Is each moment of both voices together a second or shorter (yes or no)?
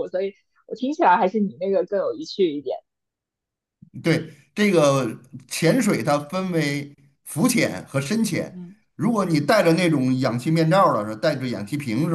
yes